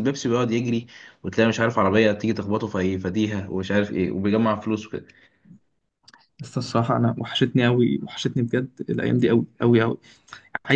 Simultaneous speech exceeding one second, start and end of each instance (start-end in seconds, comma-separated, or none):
none